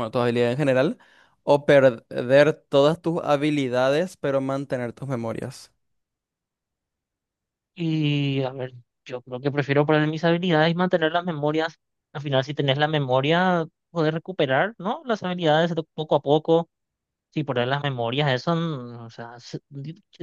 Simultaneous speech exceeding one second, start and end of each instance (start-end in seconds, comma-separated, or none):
none